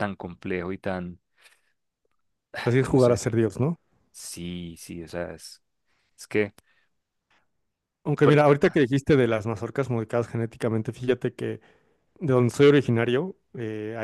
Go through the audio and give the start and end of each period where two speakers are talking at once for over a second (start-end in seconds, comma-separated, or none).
none